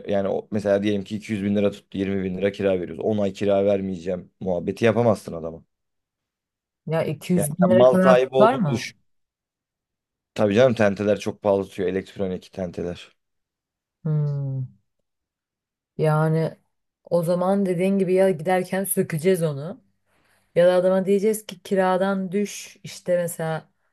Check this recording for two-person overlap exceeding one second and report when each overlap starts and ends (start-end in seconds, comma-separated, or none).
7.3-8.9